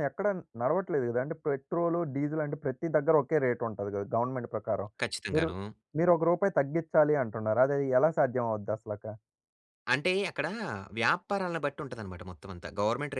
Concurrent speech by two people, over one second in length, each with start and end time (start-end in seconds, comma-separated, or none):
none